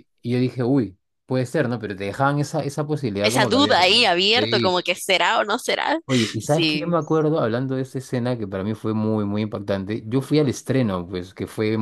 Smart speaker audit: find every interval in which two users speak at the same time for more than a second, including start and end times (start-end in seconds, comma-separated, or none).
3.2-4.8